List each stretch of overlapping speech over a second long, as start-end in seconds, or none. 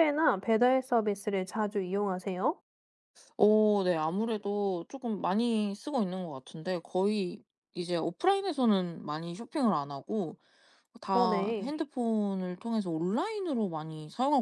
none